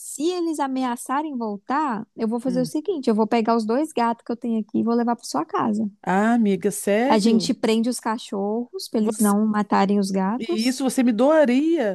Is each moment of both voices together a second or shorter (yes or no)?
yes